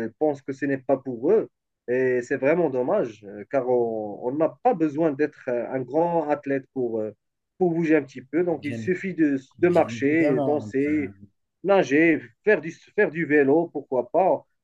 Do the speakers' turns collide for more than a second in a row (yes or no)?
yes